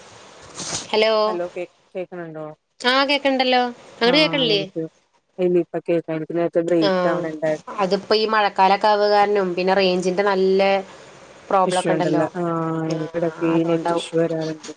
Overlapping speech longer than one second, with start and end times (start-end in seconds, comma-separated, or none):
none